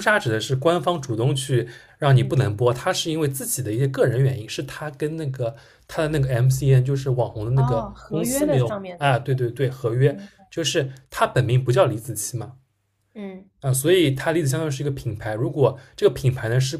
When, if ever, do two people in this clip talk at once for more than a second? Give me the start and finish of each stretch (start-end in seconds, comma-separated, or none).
7.5-9.3